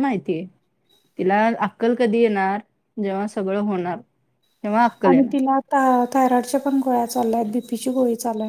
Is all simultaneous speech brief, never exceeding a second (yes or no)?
yes